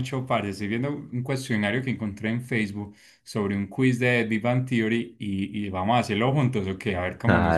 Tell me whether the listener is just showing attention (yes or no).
no